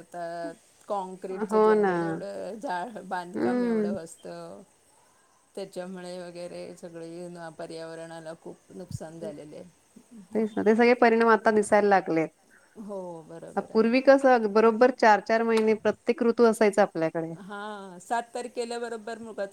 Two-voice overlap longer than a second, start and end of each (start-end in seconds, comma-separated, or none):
none